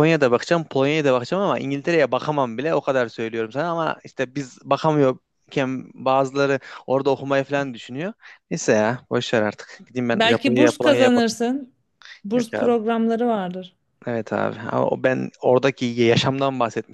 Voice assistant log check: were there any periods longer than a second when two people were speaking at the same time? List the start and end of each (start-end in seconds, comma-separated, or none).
10.1-11.4